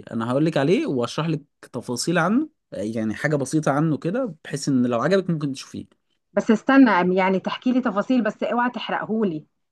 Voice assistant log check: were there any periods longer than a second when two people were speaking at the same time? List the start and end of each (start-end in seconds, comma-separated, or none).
none